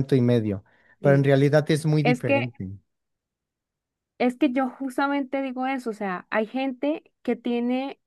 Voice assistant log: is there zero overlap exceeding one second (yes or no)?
yes